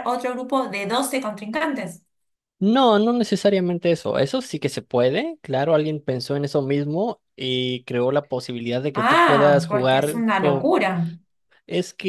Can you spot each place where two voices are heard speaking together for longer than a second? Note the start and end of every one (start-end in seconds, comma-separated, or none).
8.9-10.7